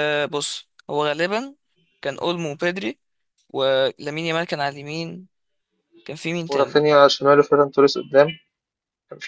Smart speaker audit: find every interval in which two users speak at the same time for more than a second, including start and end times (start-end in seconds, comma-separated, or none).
none